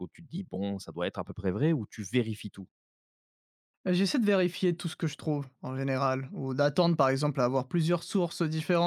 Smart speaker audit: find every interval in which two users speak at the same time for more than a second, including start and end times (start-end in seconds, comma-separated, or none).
none